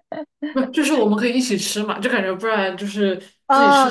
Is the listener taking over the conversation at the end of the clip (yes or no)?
yes